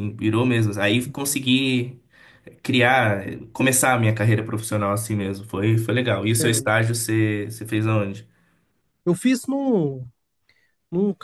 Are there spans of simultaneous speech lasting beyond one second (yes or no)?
no